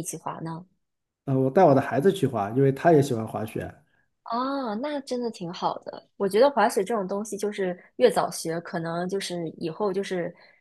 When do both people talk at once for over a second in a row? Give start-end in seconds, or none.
none